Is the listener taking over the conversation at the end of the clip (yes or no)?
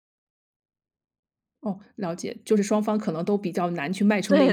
yes